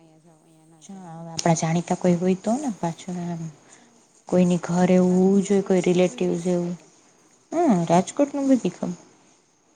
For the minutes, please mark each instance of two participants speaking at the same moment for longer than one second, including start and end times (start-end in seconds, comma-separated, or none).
4.7-6.7